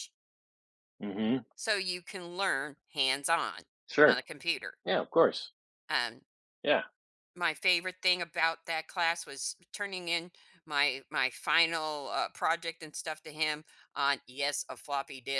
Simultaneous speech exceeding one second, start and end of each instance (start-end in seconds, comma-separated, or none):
none